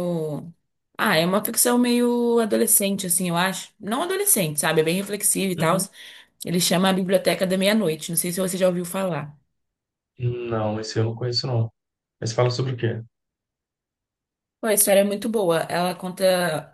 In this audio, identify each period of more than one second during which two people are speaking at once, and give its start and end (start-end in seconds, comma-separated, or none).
none